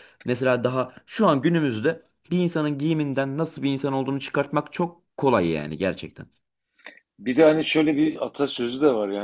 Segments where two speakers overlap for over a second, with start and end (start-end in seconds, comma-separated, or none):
none